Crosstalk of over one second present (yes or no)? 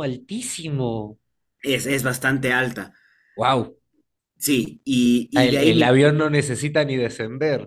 no